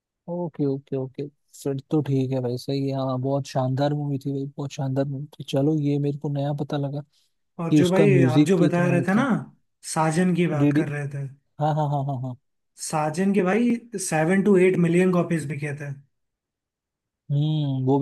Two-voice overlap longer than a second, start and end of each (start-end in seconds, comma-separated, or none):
7.7-9.2